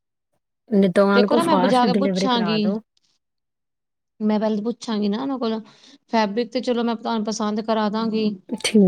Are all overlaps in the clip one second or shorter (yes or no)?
no